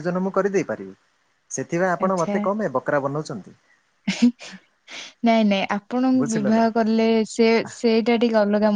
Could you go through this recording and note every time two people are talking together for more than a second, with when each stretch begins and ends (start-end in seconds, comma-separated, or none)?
none